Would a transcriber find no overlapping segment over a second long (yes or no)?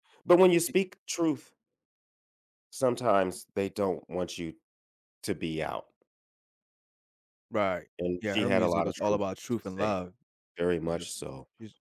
no